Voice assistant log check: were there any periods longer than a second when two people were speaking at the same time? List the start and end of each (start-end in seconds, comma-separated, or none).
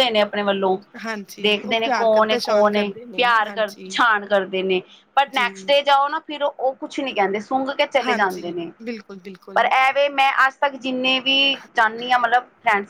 1.4-3.9